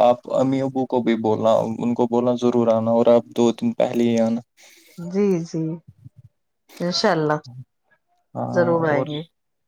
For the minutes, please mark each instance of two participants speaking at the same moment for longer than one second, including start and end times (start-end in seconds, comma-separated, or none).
none